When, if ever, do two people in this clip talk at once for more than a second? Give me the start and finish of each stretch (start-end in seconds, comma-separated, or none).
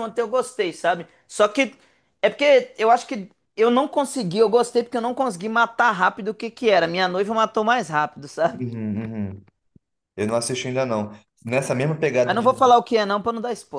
none